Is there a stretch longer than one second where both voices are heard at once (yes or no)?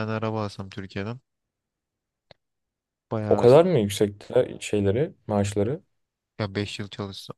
no